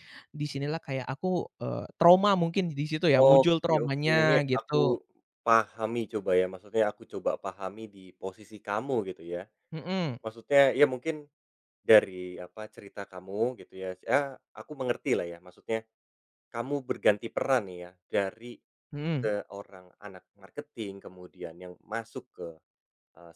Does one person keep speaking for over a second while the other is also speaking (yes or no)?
yes